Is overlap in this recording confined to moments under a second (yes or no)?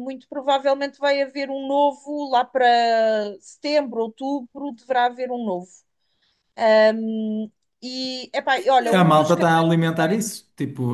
yes